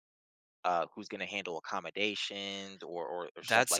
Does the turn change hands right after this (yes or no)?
yes